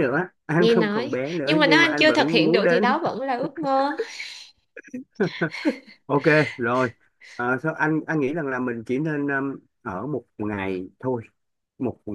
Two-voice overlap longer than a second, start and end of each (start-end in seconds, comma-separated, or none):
0.6-2.8